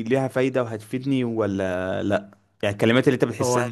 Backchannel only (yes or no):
yes